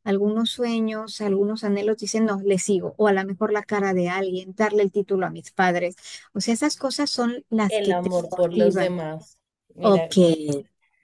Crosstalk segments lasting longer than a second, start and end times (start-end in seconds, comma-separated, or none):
7.7-8.9